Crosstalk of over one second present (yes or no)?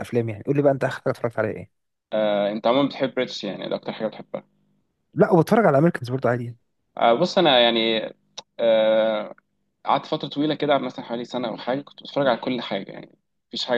no